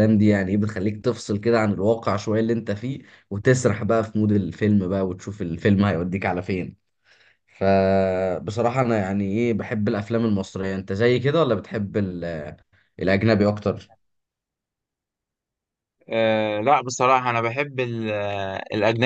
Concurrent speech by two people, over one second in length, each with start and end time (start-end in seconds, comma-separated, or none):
none